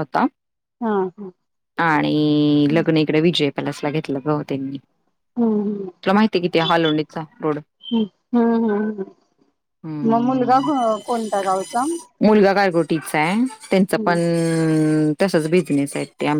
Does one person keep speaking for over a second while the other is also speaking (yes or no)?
no